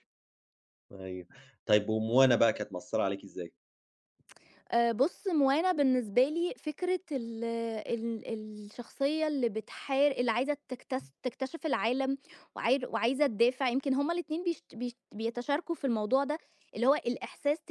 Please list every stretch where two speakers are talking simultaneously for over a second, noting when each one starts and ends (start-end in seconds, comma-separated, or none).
none